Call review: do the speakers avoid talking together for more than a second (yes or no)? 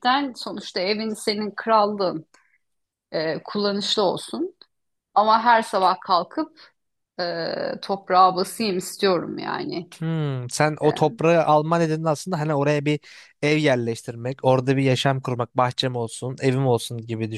yes